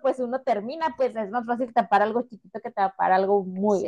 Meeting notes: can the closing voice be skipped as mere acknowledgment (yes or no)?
no